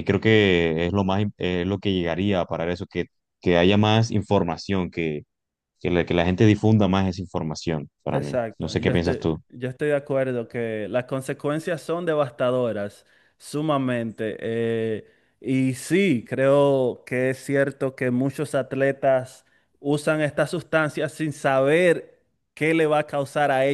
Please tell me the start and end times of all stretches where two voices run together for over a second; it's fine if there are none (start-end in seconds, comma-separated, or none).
8.1-9.4